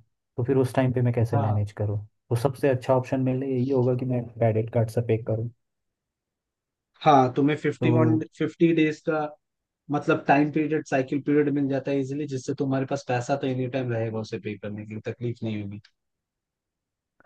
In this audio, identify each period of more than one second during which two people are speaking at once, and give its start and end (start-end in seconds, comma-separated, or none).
none